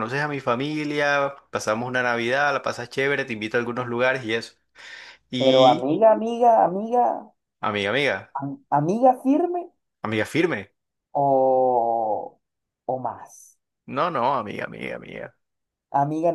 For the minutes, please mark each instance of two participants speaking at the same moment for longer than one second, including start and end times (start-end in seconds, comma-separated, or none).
none